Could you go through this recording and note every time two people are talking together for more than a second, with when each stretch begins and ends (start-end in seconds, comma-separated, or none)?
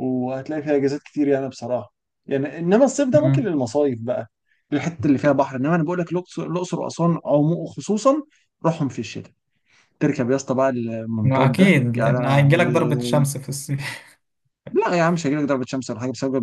11.2-13.2